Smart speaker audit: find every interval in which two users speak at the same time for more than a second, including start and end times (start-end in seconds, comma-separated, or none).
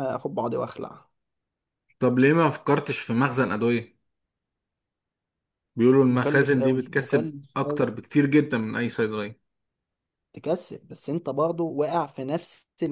6.1-8.0